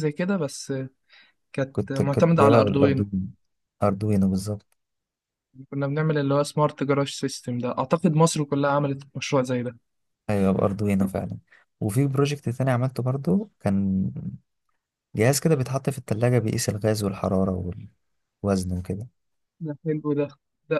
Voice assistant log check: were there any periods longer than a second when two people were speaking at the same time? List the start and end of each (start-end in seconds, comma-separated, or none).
1.7-3.0